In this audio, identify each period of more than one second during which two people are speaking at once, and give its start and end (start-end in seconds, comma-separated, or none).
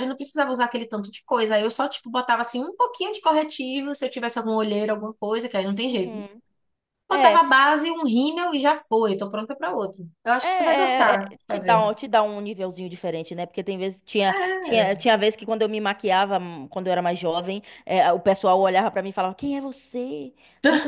10.4-11.9